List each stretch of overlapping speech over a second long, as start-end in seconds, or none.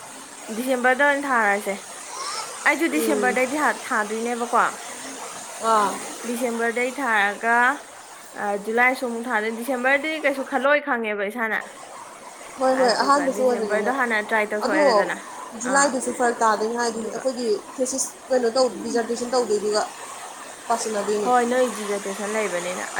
12.7-13.9